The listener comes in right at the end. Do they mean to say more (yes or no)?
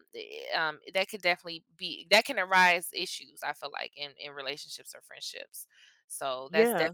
no